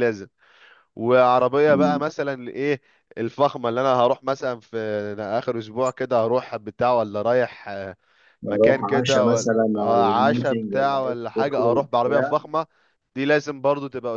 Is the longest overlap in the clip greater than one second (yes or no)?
yes